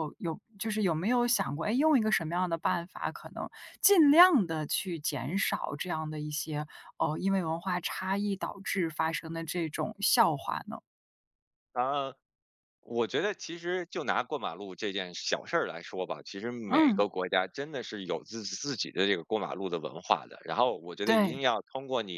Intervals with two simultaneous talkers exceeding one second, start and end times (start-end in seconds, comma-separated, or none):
none